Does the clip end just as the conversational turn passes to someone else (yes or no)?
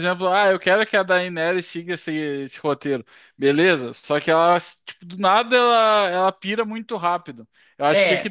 no